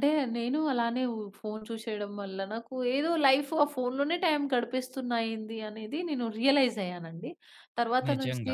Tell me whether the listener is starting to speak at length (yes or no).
no